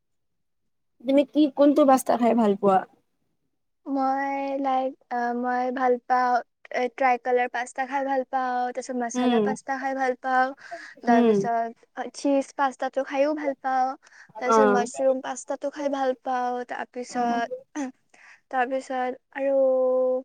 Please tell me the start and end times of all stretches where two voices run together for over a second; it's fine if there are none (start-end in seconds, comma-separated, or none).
none